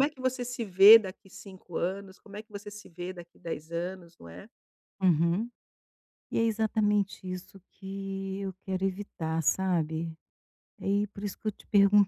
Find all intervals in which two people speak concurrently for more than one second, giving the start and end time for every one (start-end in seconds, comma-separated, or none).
none